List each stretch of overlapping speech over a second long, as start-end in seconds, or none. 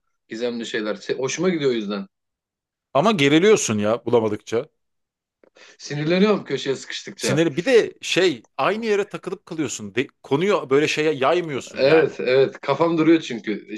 none